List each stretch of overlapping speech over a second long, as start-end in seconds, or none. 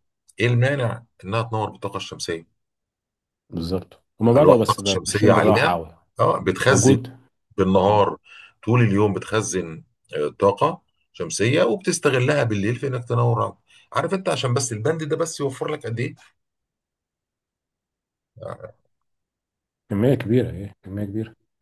4.3-5.8